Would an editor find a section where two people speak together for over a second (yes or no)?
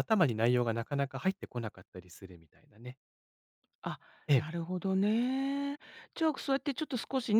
no